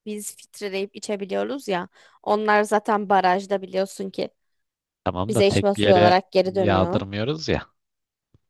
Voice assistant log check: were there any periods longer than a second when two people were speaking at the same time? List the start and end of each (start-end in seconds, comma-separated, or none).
5.3-7.0